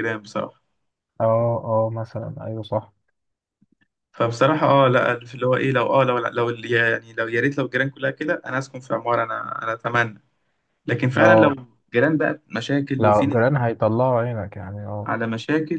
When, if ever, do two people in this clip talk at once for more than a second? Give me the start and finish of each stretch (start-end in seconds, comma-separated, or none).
none